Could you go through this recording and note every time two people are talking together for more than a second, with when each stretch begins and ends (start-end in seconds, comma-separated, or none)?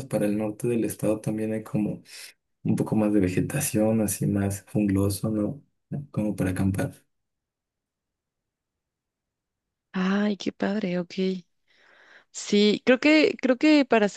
none